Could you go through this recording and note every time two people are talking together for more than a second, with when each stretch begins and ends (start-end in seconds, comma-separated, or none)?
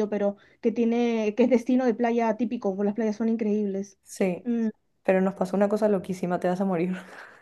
none